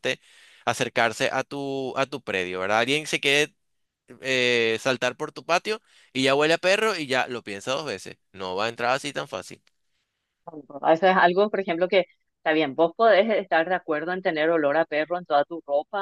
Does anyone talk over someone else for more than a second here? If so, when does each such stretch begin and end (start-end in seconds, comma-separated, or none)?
none